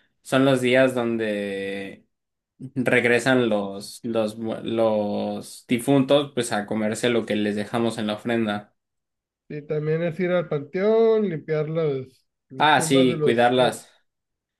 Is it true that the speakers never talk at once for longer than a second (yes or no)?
no